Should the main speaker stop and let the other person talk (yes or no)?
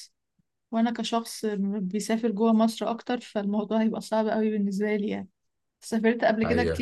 no